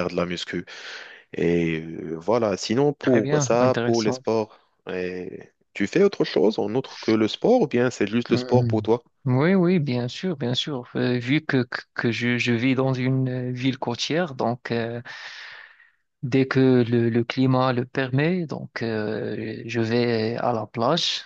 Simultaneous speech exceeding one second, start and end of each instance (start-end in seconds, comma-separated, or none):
3.0-4.2